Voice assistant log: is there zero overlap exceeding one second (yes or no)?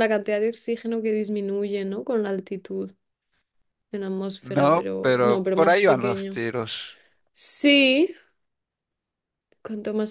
no